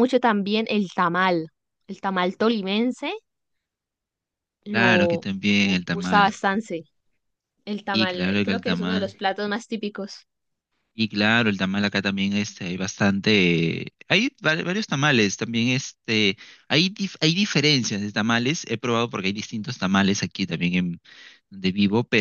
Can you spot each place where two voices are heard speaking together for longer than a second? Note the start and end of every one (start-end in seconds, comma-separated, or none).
4.7-6.4, 7.9-9.1